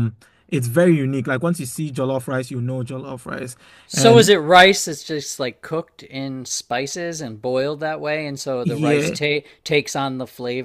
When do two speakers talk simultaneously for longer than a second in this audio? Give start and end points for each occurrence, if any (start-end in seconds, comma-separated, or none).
none